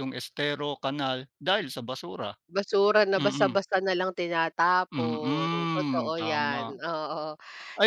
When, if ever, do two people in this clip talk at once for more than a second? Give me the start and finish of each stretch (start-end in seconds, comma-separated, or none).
4.9-6.8